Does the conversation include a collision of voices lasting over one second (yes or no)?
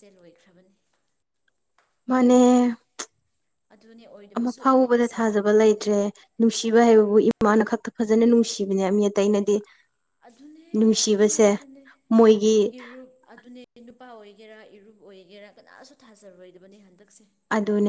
yes